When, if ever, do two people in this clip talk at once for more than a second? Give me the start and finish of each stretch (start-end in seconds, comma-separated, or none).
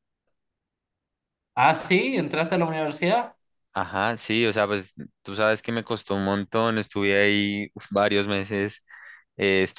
none